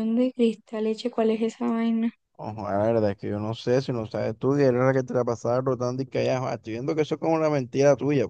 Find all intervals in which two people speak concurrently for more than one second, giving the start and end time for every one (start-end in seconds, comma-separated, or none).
none